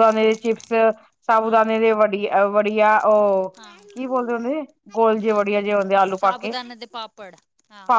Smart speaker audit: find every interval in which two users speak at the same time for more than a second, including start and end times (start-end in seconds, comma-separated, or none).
none